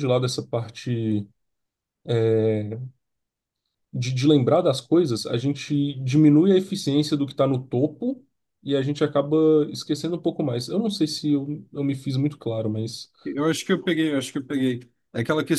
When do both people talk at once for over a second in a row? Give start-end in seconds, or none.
none